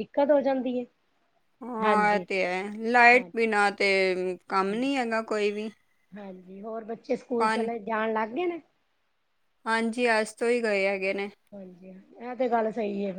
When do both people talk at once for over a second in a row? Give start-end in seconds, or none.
none